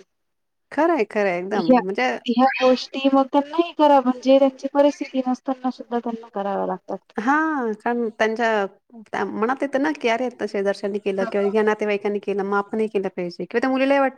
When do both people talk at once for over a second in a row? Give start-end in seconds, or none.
none